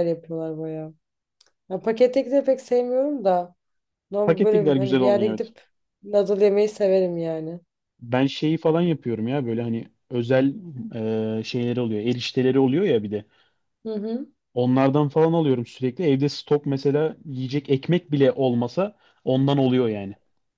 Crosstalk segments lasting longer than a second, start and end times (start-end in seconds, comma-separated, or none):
4.2-5.5